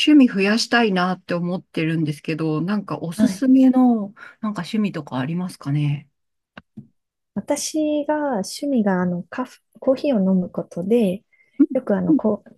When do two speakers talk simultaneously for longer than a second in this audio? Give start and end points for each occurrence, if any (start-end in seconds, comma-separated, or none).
none